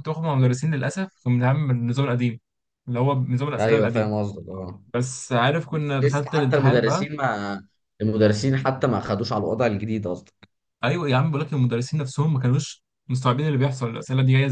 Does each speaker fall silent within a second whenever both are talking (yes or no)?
no